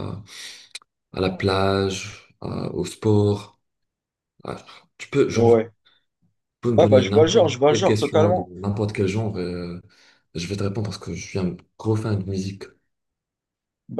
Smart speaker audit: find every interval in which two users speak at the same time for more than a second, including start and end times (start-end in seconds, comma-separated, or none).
6.8-8.5